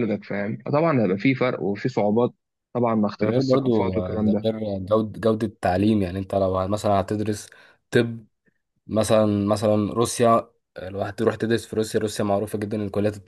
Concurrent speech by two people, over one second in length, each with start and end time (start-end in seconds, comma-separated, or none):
3.2-4.5